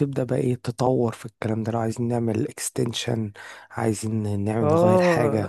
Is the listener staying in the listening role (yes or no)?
no